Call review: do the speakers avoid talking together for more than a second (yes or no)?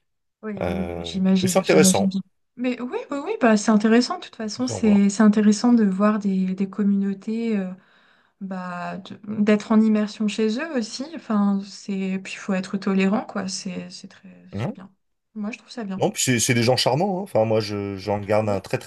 no